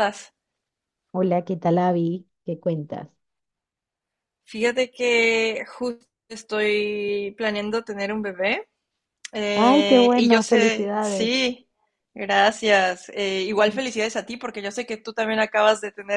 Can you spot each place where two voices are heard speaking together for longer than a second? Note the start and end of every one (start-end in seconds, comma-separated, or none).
9.5-11.4